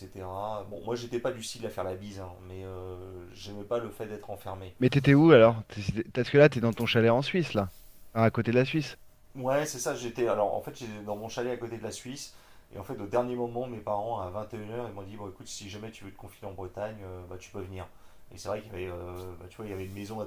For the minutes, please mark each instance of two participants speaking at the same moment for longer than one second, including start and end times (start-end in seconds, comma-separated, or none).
none